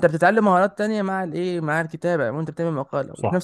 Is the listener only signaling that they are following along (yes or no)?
no